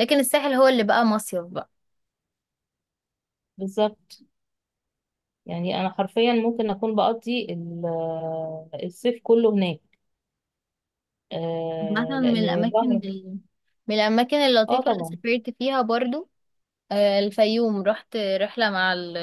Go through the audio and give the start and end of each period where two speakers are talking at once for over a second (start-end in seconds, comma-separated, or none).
11.8-13.0